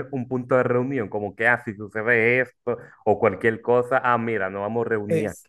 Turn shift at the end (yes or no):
yes